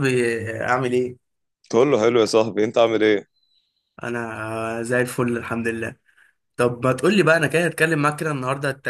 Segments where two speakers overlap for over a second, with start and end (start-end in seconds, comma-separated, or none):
none